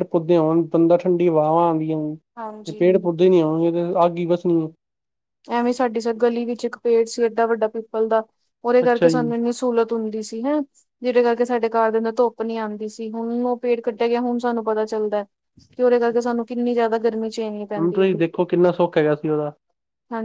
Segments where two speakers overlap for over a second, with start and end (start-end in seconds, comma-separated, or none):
none